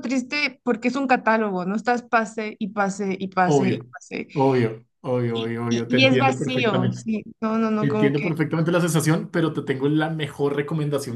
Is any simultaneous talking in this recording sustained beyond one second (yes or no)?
yes